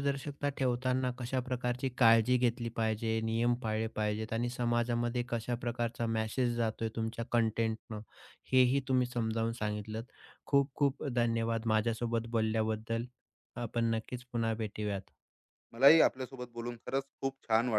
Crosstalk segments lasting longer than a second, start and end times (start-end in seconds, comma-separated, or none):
none